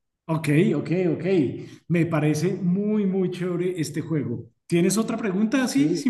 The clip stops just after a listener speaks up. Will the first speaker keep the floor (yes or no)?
no